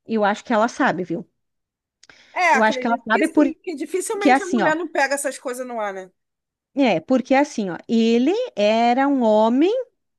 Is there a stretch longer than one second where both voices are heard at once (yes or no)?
yes